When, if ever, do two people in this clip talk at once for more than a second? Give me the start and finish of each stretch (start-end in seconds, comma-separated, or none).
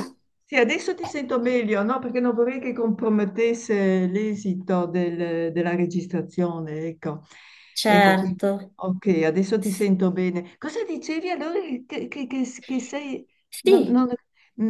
none